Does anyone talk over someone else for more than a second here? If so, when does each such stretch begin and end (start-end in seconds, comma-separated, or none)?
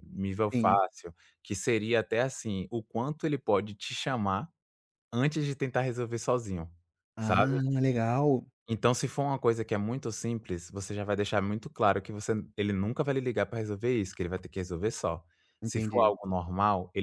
none